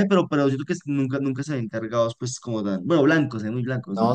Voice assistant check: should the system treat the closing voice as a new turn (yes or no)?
yes